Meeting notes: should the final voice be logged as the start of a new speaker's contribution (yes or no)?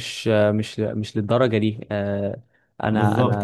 yes